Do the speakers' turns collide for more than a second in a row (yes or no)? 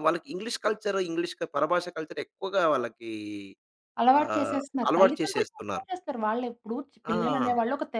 yes